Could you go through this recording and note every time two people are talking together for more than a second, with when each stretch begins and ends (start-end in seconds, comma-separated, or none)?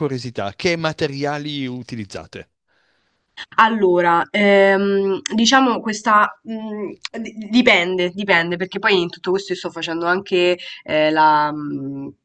none